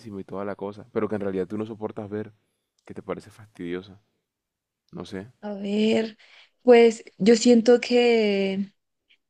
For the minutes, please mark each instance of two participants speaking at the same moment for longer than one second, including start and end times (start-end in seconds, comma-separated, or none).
none